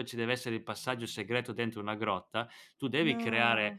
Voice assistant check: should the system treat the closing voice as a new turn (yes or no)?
no